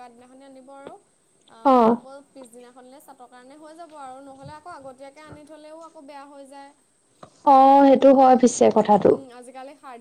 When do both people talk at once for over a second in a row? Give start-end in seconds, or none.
none